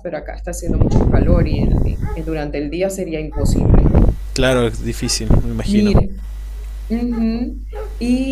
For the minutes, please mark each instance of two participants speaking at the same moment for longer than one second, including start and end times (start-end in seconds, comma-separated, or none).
none